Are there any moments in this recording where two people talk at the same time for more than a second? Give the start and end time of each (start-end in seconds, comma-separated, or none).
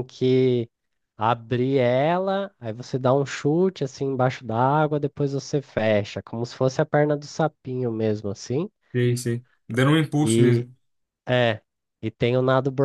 none